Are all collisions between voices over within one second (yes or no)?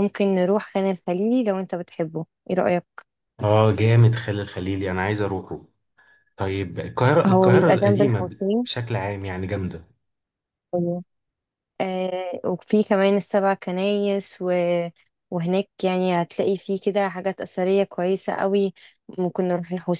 no